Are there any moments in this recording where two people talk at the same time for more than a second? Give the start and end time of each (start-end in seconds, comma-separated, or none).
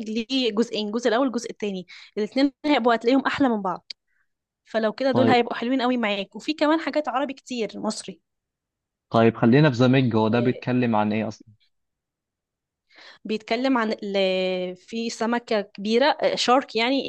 none